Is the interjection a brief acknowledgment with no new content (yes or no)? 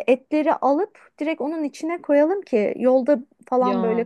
yes